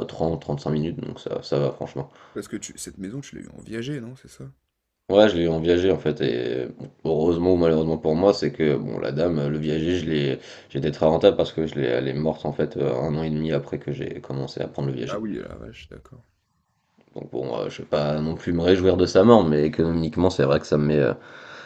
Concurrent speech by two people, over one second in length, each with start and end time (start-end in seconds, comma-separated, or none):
none